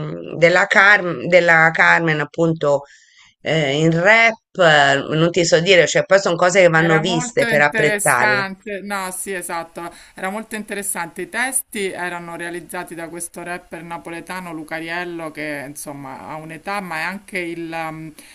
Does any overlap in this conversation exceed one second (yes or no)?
yes